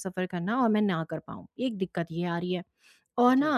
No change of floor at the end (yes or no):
yes